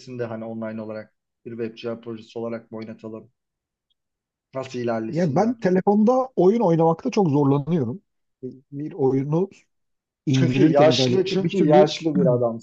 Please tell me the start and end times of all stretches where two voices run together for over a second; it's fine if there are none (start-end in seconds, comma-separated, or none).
10.3-11.9